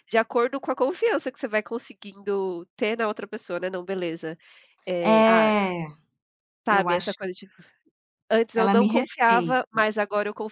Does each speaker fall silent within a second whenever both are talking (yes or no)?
no